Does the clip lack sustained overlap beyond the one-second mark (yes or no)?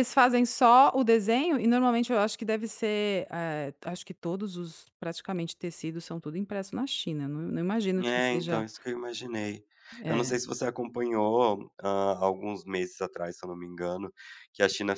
yes